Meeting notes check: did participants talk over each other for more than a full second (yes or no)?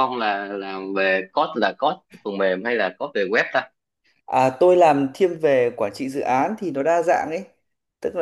no